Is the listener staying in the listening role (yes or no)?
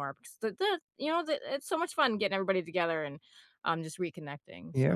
no